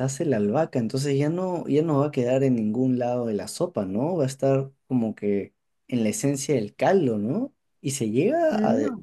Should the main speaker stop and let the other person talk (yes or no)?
no